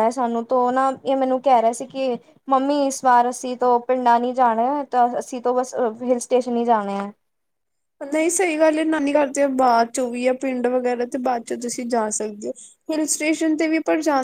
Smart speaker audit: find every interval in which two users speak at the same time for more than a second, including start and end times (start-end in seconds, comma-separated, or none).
none